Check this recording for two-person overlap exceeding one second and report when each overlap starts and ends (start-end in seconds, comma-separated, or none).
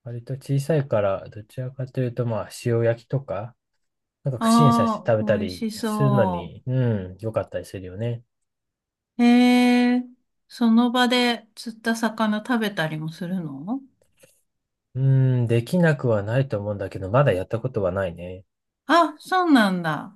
4.4-6.6